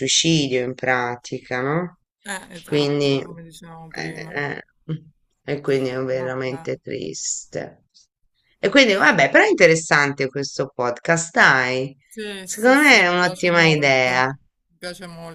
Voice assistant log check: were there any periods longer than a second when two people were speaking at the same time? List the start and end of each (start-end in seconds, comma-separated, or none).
12.4-14.2